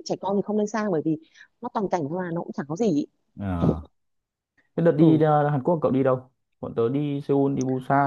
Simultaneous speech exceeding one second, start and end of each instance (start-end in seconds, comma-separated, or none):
none